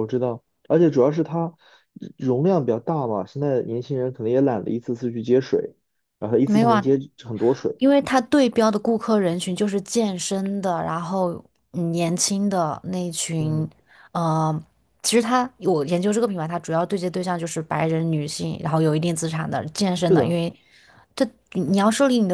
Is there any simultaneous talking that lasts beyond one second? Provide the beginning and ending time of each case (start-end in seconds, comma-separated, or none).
none